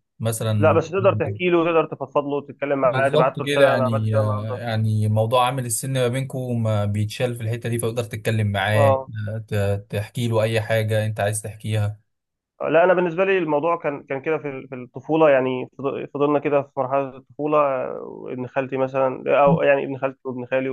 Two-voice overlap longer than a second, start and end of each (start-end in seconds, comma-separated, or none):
2.8-4.6